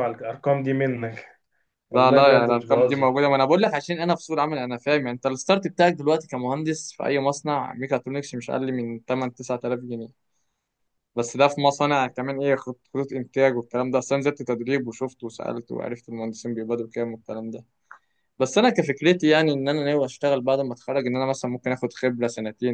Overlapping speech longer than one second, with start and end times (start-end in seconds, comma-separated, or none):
1.9-3.2